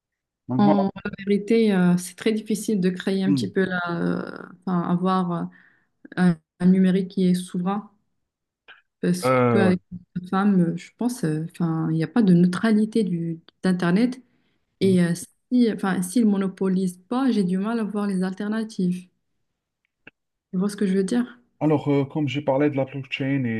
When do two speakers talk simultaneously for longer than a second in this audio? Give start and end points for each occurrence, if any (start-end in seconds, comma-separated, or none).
none